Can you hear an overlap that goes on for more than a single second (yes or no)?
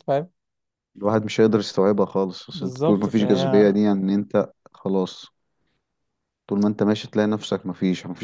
yes